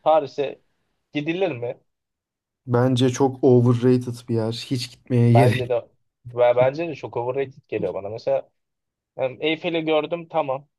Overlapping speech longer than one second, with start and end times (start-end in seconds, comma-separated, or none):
none